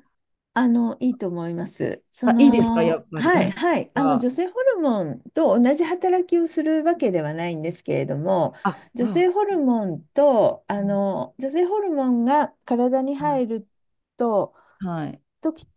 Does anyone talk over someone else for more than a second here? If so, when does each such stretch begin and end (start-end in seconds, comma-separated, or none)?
2.2-4.3